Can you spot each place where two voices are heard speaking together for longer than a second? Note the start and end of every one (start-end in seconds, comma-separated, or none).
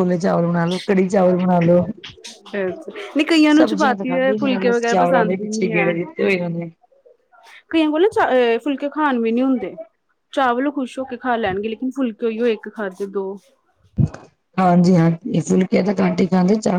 3.6-5.9